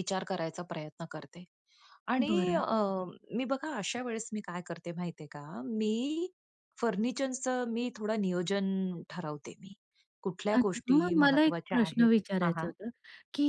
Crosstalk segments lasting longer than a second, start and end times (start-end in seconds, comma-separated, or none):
10.6-12.7